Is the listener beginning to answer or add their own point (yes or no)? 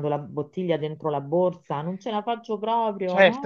yes